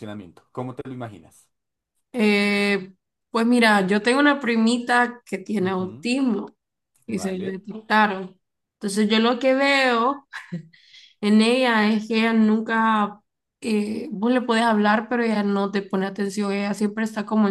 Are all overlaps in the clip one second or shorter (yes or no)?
yes